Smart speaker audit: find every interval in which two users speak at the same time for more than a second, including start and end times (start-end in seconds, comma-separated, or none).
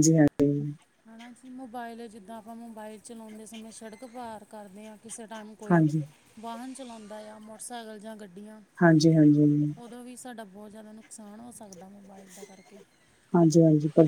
none